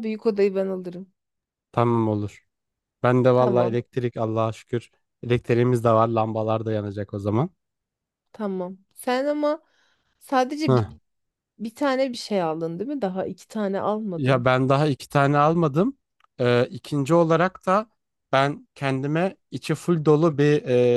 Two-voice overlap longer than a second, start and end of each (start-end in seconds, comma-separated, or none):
none